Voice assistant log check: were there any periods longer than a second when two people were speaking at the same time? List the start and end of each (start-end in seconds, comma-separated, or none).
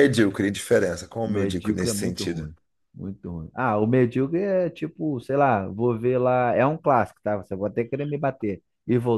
1.2-2.5